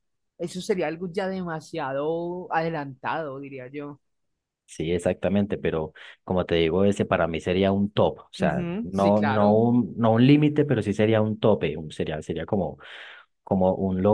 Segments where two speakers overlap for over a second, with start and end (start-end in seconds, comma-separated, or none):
8.4-9.6